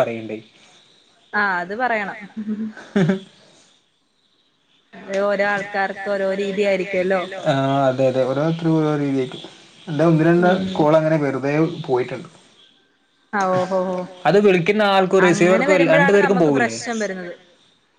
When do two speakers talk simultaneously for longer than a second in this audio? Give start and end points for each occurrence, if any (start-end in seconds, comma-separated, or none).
15.3-16.8